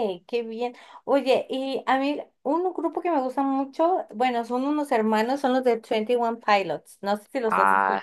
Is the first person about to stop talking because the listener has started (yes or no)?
yes